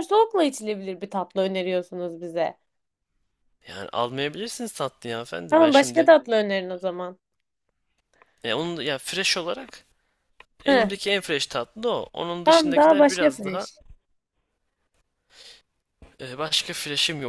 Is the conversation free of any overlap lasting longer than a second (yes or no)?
no